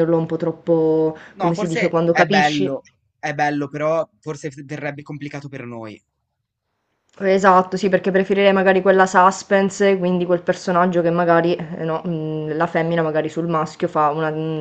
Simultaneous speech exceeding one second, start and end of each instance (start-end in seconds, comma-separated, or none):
1.4-2.8